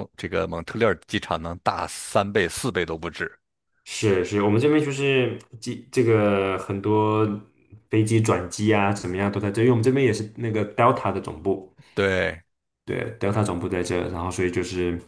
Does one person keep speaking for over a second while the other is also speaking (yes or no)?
no